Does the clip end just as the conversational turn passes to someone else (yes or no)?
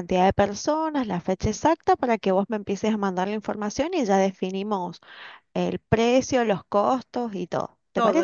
yes